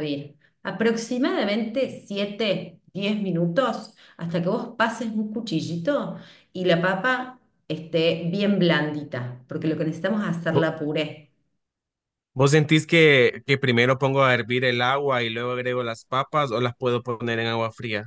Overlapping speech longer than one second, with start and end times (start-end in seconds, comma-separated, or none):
none